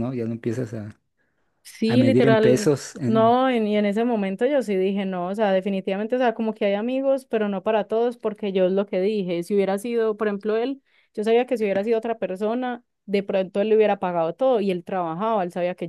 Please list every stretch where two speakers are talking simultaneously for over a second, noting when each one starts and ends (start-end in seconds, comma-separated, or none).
1.8-3.4